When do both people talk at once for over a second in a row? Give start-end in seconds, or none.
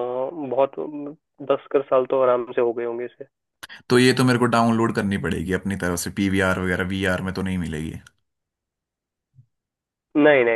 none